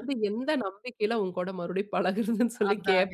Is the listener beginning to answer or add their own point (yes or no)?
yes